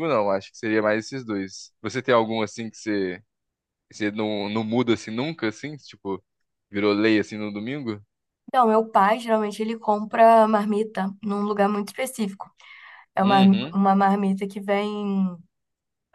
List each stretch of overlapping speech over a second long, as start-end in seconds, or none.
none